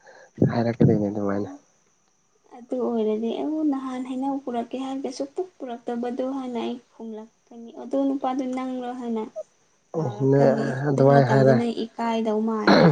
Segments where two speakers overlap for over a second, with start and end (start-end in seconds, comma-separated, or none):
9.9-11.6